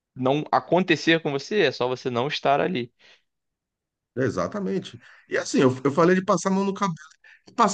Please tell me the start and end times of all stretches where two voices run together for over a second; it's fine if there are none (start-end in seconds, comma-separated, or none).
none